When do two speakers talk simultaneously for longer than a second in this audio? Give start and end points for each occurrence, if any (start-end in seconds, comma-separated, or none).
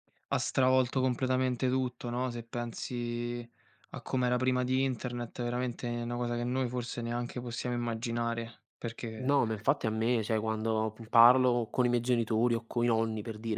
none